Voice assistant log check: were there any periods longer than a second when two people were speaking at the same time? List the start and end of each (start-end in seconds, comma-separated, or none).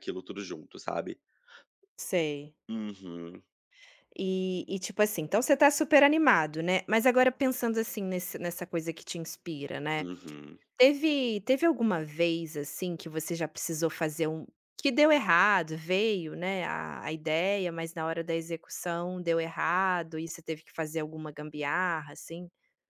none